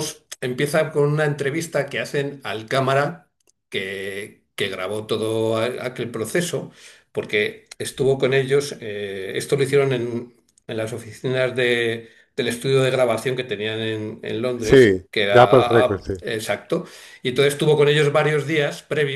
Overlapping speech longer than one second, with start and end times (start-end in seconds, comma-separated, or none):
14.6-16.1